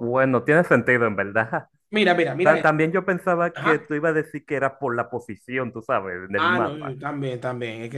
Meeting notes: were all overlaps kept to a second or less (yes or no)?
yes